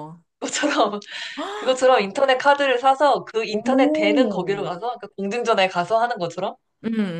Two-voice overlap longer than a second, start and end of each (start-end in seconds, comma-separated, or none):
3.5-4.8